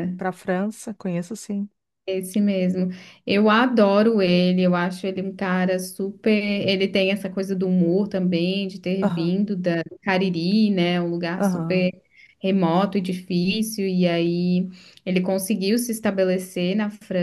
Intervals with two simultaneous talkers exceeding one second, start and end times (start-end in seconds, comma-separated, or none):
none